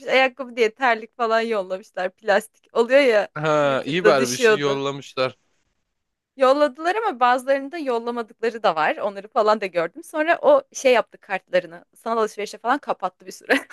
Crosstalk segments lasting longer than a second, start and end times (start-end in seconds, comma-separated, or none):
3.3-4.8